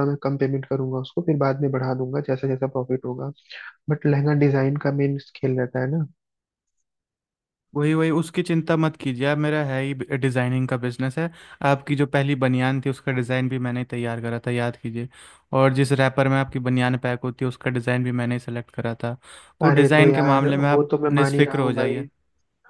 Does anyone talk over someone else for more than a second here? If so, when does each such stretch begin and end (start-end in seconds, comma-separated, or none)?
19.6-22.0